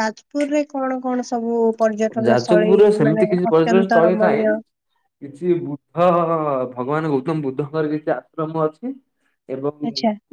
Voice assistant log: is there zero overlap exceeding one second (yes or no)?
no